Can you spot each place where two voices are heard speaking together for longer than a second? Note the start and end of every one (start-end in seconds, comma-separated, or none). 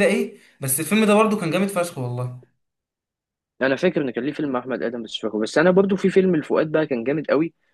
none